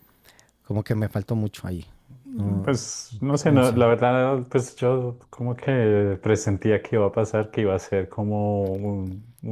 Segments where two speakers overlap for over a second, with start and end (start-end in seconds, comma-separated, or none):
none